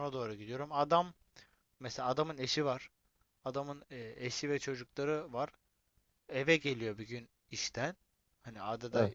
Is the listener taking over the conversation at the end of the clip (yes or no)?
no